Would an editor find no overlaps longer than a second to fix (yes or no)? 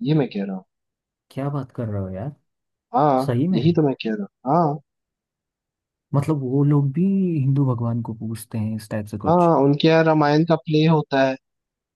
yes